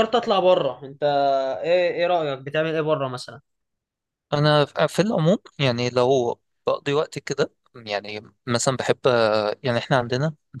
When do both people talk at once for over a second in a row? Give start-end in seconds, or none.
none